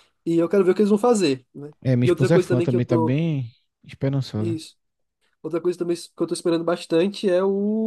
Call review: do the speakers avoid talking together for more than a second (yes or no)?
no